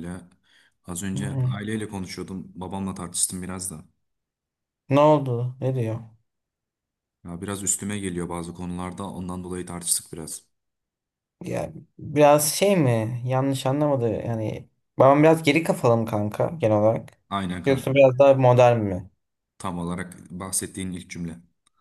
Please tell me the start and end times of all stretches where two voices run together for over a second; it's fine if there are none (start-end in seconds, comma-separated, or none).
none